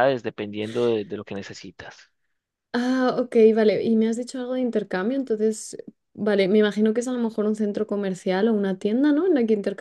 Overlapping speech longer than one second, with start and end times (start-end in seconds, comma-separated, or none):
none